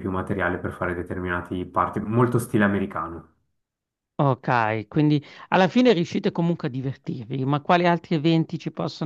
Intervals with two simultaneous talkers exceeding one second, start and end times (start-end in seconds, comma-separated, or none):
none